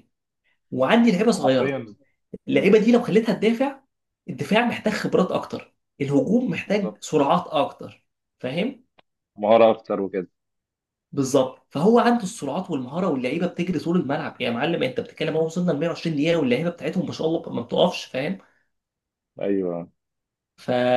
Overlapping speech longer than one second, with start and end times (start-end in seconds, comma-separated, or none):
none